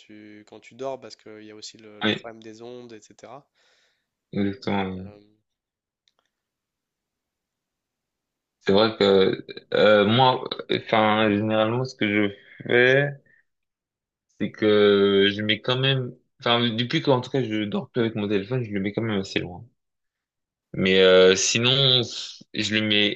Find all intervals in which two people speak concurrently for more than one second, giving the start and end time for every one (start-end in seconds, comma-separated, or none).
none